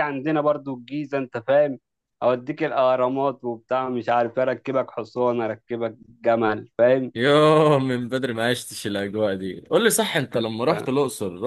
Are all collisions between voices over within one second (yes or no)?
yes